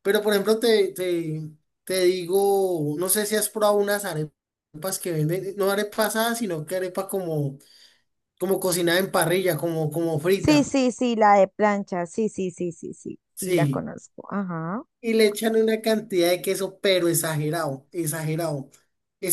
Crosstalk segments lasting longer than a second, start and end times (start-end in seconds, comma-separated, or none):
none